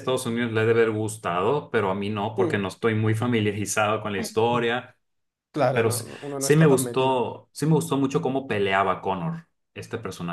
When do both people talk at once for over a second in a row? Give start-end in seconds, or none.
5.7-7.2